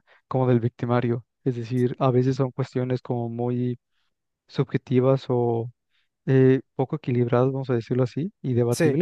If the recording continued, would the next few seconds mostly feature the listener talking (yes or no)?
no